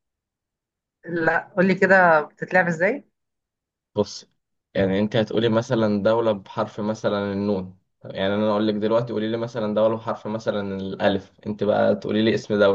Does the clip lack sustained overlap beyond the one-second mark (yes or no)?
yes